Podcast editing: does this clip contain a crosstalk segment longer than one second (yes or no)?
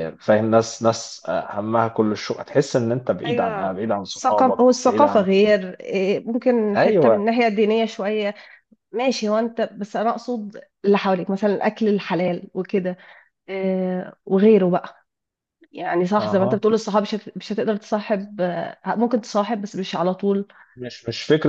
yes